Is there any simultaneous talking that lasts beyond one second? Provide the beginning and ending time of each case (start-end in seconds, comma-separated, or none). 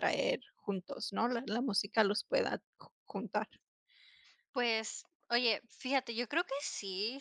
none